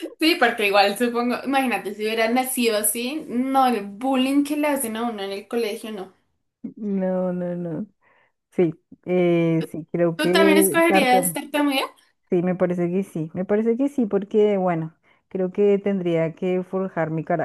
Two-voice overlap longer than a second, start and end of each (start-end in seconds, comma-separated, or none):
10.2-11.4